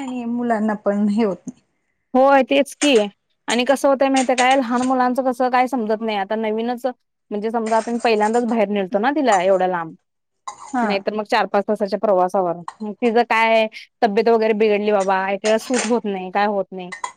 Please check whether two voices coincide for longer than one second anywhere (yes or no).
no